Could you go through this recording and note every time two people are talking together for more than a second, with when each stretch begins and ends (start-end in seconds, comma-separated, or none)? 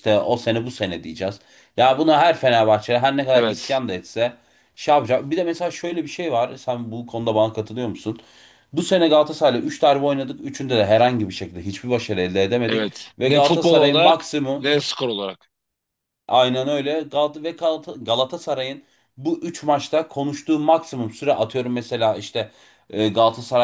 12.7-14.7